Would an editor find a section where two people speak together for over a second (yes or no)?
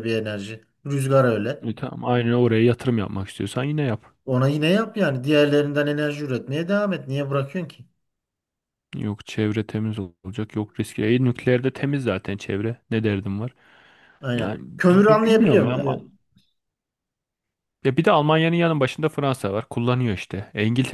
yes